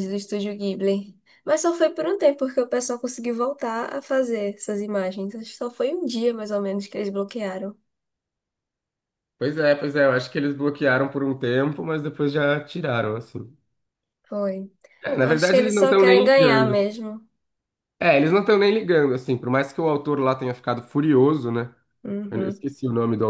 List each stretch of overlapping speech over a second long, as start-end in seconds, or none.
15.2-16.9